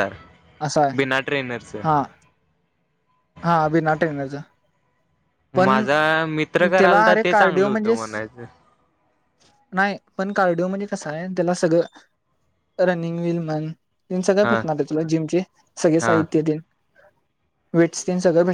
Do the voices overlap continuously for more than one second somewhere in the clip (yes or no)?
yes